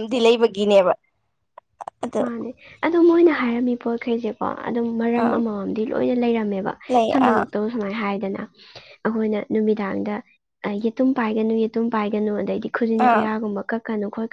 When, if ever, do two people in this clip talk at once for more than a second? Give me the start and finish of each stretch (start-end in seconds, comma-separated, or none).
none